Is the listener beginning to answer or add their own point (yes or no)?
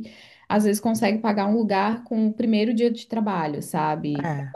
no